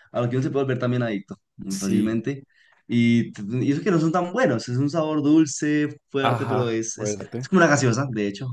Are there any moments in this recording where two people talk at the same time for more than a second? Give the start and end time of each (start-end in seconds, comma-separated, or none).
6.2-7.5